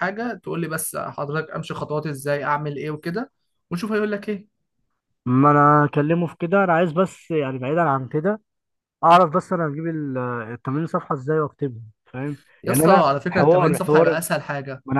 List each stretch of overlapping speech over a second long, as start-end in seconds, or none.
12.6-14.2